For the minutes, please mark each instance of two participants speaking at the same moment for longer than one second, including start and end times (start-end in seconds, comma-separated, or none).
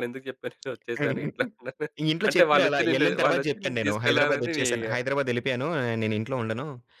2.3-4.7